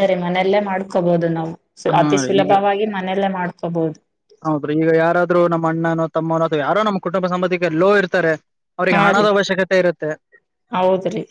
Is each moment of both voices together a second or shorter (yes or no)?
yes